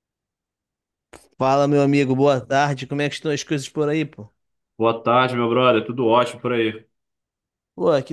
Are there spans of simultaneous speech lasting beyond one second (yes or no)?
no